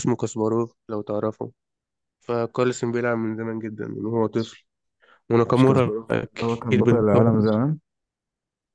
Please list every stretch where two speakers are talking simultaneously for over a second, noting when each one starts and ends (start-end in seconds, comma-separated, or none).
5.5-7.2